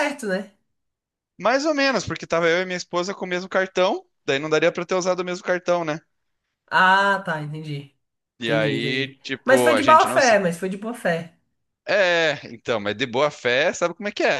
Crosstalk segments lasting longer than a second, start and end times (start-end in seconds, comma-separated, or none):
8.4-10.4